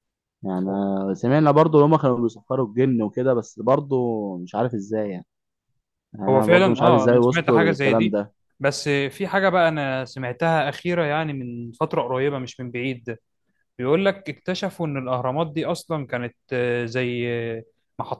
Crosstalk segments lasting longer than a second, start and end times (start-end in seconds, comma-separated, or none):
6.3-8.2